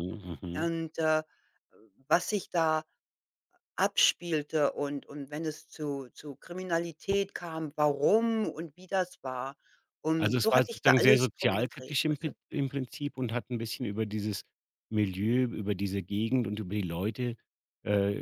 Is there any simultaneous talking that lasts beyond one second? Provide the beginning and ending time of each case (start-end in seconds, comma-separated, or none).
10.2-12.3